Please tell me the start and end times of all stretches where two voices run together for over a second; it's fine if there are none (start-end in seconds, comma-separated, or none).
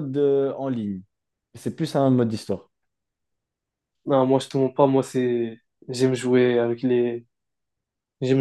none